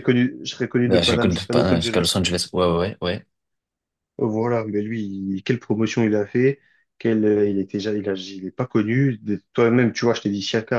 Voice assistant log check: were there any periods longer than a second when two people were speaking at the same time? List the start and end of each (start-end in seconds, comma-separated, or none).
0.8-2.2